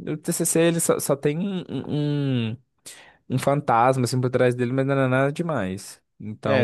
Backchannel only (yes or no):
no